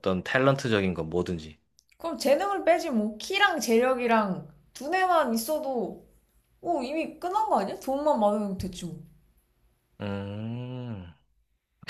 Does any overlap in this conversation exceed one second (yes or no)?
no